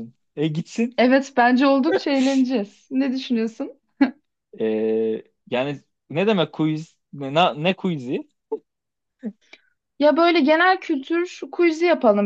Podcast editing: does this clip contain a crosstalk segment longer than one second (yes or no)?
no